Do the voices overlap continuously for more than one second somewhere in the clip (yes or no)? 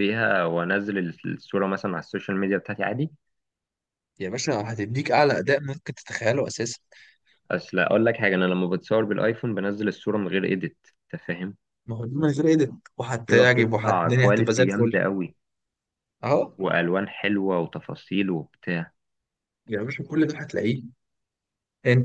yes